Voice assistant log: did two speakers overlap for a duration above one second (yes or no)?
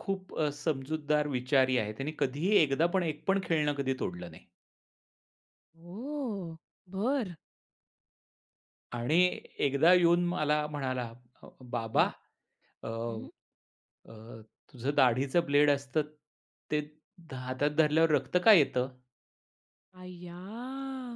no